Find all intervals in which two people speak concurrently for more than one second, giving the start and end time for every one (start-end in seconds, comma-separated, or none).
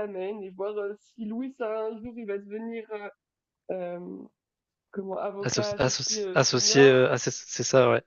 5.4-7.0